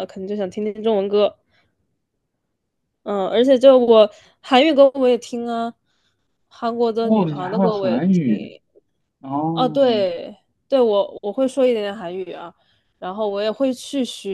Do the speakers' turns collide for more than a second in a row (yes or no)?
yes